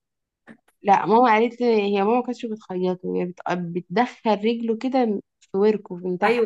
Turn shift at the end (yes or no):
yes